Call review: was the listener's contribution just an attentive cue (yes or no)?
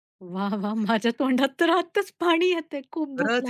no